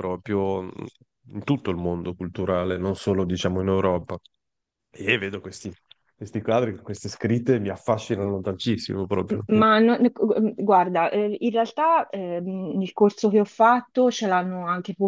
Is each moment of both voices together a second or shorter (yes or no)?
yes